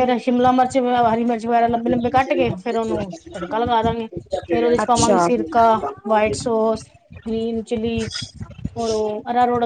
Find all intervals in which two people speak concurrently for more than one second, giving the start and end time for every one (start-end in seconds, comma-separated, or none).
4.8-6.3